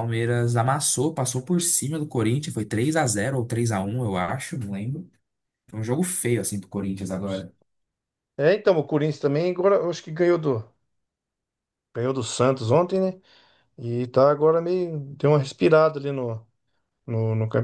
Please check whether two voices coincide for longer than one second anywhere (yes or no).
no